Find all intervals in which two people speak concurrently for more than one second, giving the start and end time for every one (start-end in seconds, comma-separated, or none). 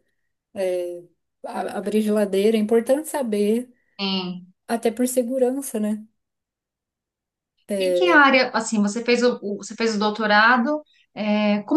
none